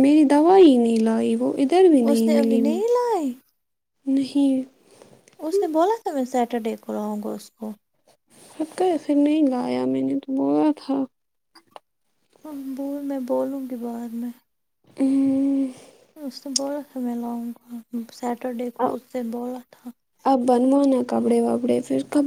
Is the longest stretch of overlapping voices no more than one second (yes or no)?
yes